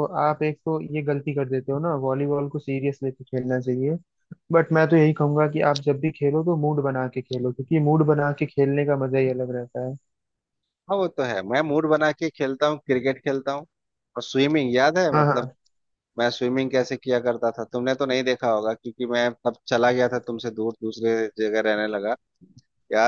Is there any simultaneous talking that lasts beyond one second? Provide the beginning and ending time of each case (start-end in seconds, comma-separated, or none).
none